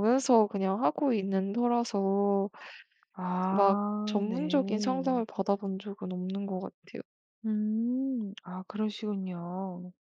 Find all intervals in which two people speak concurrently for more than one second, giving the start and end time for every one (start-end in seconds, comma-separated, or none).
3.5-5.2